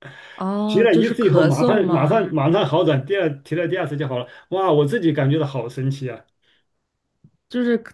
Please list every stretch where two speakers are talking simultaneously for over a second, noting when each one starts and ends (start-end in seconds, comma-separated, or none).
0.7-2.3